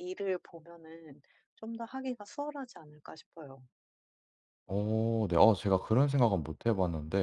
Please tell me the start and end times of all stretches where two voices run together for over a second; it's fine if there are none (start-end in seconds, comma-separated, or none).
none